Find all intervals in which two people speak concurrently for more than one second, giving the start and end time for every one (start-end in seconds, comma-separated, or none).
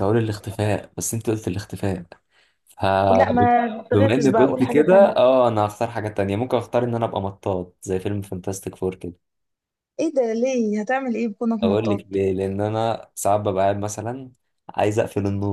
3.9-5.3